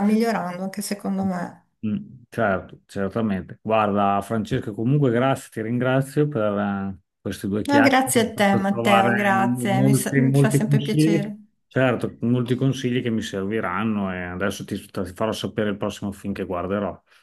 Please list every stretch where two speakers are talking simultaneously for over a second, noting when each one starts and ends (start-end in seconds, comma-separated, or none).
7.7-11.4